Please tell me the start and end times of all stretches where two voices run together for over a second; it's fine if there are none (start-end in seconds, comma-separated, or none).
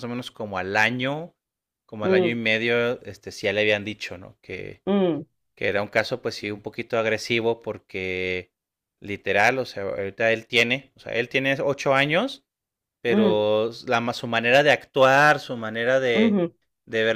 none